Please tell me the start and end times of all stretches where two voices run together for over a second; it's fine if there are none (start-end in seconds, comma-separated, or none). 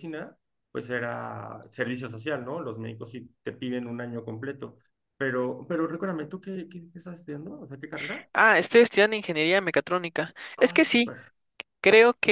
none